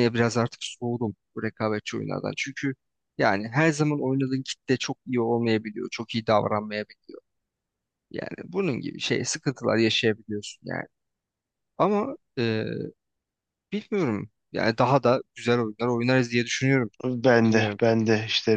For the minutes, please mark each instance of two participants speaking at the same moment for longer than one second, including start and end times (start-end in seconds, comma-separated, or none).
none